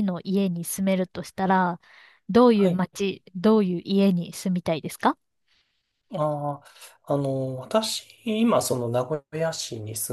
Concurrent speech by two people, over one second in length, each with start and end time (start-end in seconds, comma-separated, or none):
none